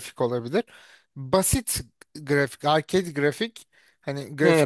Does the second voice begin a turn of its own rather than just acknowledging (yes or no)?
yes